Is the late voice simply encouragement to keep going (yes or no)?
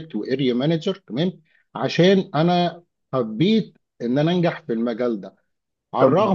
yes